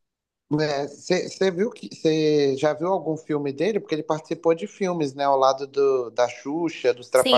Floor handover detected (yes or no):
yes